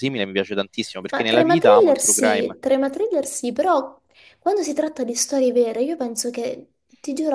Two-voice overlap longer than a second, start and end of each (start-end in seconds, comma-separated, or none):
1.1-2.5